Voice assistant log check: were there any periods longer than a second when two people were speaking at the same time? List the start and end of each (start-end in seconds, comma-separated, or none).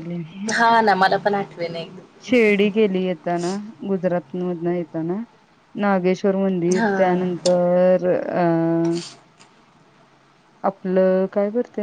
none